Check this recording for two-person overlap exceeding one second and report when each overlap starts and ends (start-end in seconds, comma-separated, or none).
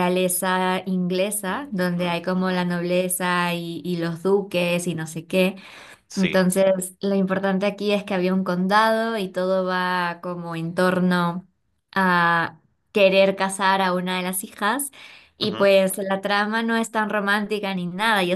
1.4-2.7